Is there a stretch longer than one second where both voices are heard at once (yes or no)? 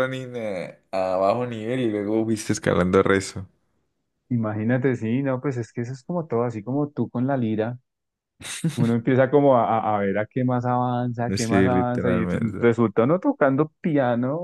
yes